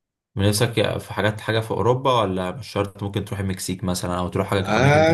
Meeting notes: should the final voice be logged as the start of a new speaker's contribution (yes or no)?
yes